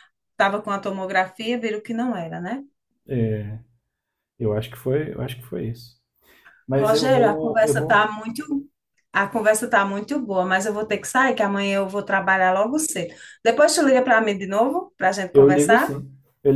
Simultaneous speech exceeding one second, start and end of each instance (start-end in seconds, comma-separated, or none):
6.8-8.0